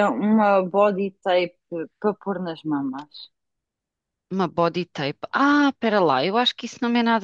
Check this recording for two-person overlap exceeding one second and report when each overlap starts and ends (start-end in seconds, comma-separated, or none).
none